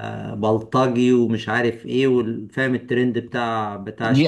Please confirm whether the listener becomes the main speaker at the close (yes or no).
yes